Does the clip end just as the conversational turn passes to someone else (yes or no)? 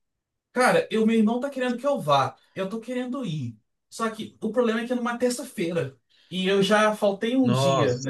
no